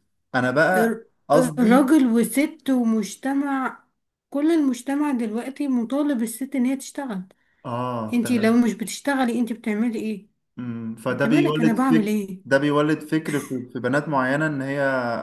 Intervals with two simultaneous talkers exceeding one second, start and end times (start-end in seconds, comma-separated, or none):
11.1-12.4